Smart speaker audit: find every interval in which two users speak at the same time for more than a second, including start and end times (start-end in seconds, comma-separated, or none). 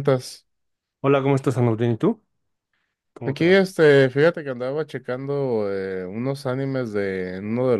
none